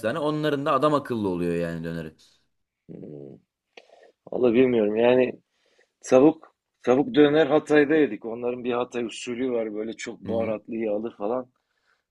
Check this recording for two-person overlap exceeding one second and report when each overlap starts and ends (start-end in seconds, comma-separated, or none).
none